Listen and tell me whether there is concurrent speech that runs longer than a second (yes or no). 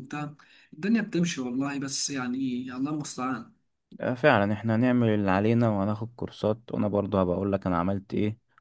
no